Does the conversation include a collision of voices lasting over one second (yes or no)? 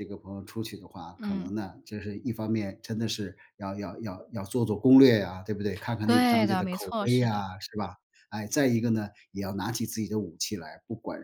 yes